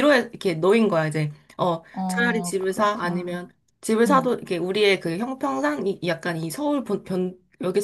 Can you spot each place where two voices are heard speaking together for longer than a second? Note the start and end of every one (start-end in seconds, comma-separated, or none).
1.9-3.4